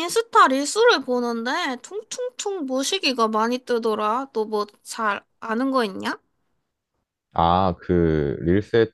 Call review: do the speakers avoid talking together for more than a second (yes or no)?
yes